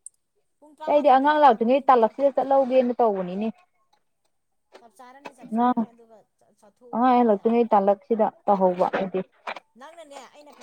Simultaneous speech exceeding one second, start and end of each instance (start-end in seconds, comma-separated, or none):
0.9-2.1